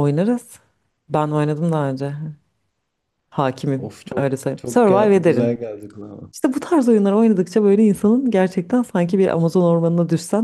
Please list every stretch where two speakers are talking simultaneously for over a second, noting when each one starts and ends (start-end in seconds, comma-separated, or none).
3.8-5.6